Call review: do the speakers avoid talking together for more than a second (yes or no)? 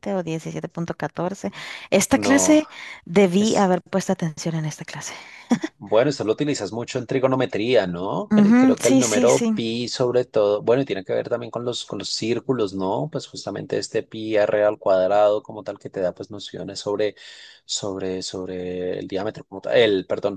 no